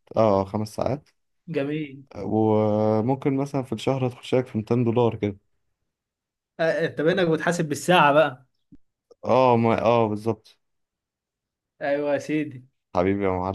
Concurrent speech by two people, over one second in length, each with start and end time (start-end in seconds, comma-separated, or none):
none